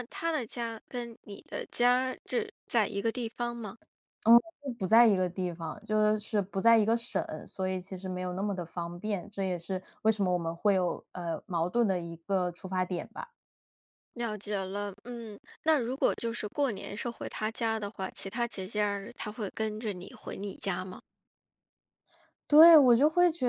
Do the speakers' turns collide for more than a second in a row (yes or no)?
no